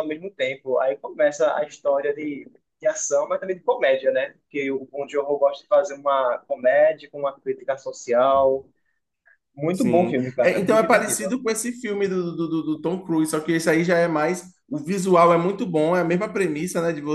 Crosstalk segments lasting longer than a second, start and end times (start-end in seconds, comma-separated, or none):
9.7-11.2